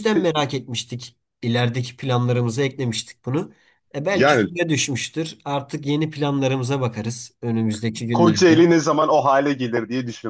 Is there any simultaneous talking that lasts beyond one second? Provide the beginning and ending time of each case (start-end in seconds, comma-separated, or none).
none